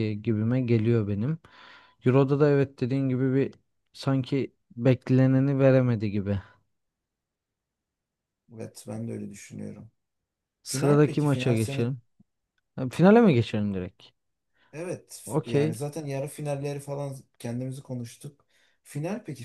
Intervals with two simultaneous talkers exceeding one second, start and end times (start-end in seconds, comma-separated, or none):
10.7-11.9